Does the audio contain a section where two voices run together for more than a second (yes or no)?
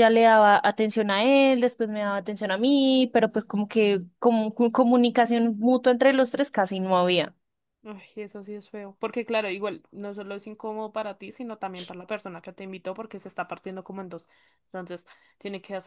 no